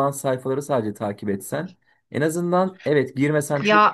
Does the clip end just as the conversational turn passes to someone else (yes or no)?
no